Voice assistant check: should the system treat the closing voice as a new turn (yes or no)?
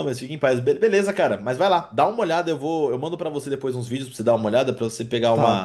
no